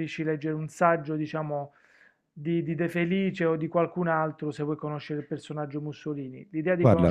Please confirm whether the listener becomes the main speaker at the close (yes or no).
no